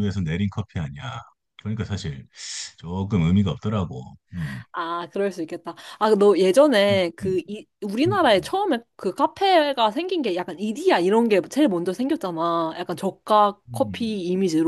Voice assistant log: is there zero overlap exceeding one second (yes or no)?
yes